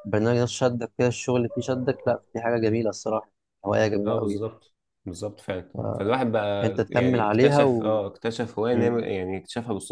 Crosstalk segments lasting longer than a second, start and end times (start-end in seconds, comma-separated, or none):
6.6-8.0